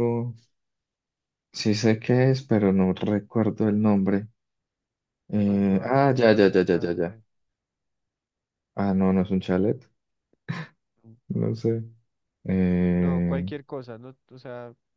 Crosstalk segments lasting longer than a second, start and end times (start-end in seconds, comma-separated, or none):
5.5-7.2